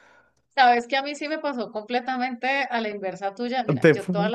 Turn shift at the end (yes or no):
no